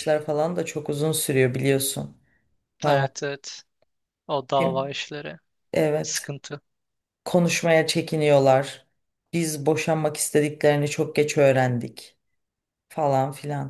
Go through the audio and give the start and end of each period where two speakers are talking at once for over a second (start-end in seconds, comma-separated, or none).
none